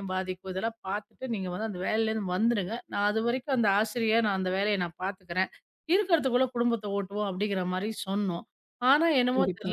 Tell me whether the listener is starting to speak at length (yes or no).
no